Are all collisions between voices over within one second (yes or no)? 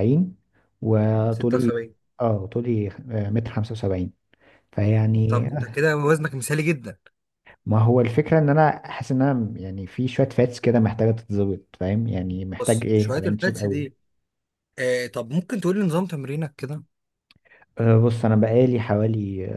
no